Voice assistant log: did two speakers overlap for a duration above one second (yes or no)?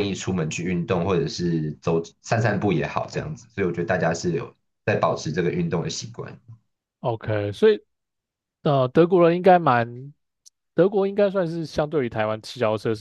no